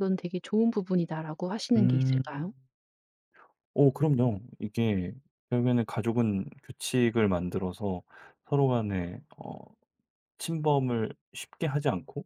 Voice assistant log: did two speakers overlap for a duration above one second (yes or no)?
no